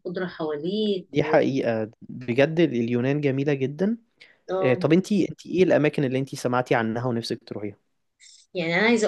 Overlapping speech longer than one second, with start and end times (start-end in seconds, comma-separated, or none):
none